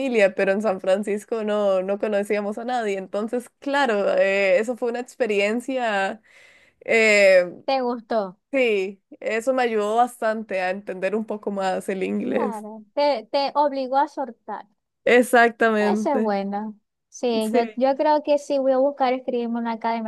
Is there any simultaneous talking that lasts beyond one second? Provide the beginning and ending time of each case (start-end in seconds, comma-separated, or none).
none